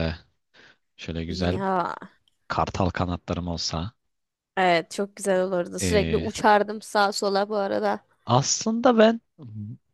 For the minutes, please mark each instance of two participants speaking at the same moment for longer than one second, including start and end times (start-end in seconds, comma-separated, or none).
none